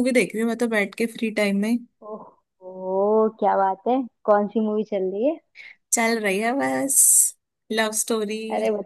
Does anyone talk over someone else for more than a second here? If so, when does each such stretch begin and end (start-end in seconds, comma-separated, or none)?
none